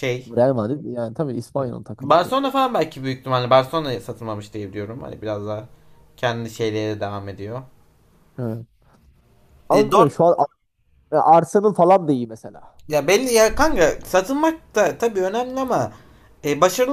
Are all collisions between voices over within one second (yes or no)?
yes